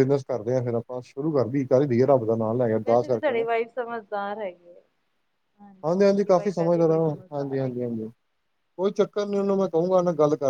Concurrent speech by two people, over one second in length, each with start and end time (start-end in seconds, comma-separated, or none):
6.1-7.9